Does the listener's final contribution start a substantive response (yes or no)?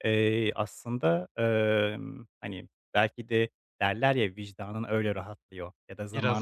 no